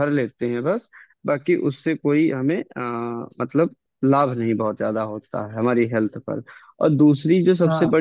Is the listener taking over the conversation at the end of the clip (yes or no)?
no